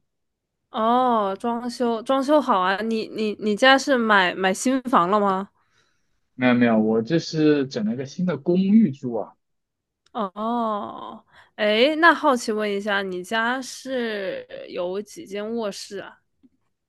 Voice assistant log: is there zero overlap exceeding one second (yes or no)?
yes